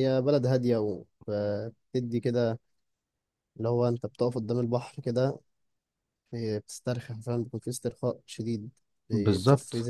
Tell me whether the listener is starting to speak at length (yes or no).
yes